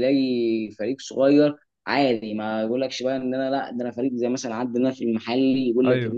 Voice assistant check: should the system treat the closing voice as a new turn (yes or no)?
no